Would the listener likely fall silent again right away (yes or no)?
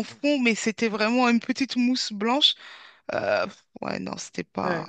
no